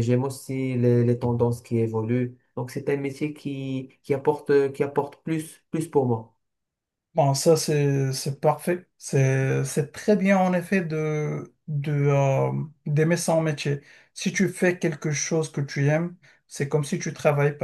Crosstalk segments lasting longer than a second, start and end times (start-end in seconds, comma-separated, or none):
none